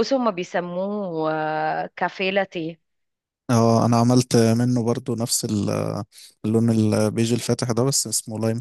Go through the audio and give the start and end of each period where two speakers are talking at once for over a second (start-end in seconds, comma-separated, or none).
none